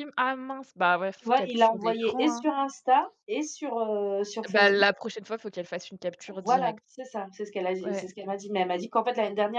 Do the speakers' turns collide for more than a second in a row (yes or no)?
yes